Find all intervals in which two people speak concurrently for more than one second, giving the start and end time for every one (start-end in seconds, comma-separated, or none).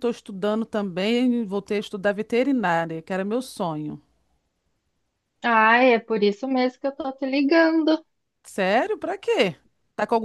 none